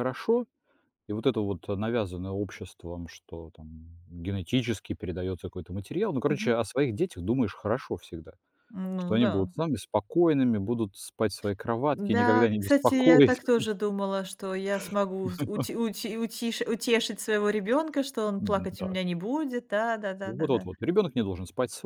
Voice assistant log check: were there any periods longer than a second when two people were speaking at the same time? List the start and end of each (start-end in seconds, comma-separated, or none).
11.9-13.4